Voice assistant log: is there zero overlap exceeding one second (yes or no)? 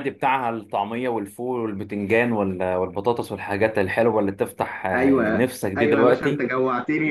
no